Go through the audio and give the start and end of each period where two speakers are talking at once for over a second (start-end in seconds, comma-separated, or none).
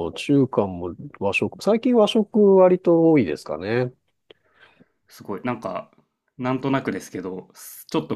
none